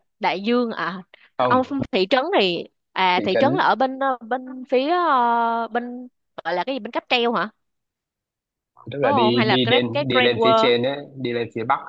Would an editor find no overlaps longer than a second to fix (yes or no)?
no